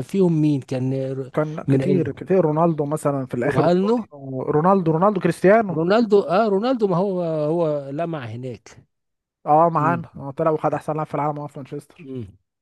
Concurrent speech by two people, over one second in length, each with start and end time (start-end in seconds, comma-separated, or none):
none